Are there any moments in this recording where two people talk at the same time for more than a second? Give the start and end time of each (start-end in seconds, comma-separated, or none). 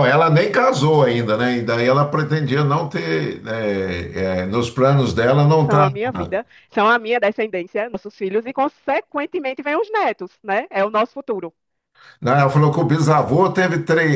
none